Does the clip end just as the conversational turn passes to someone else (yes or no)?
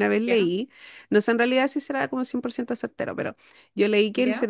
no